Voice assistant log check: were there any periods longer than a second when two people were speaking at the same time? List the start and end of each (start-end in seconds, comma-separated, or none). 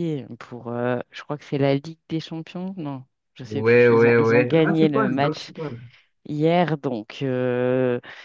3.5-5.5